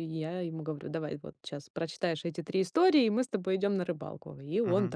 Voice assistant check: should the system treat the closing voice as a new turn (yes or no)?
no